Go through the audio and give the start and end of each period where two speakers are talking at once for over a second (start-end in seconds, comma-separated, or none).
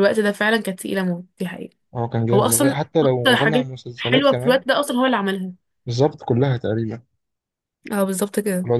2.3-4.6